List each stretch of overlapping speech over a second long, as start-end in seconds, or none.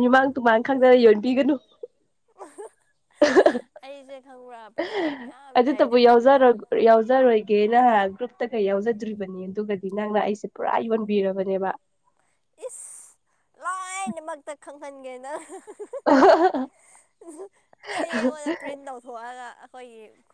none